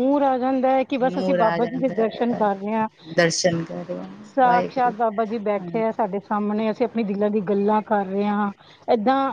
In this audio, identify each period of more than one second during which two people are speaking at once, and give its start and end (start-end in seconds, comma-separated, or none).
1.1-2.5